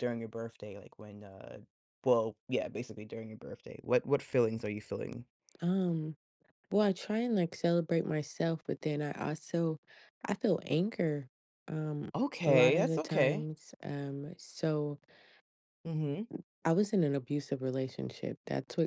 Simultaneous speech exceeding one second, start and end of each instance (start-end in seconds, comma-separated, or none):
12.1-13.5